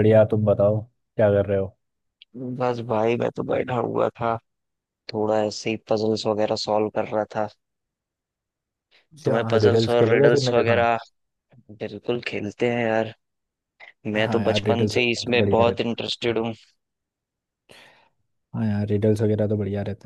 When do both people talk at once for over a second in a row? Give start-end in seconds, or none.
9.2-10.8, 14.2-16.0